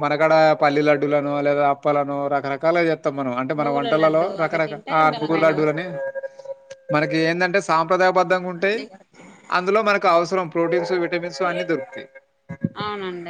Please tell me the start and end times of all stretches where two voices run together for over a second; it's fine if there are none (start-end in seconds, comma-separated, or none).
3.6-5.8